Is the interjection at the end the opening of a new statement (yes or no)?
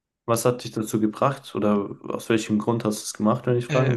yes